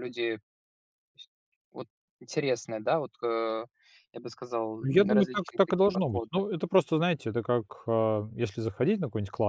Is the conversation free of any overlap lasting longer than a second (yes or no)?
no